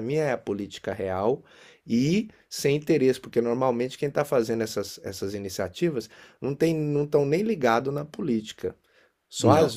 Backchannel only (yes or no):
yes